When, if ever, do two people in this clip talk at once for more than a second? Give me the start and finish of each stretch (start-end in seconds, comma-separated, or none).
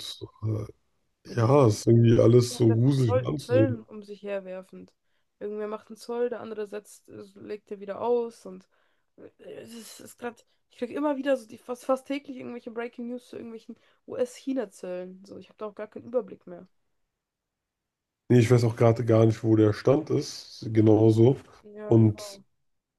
2.5-3.8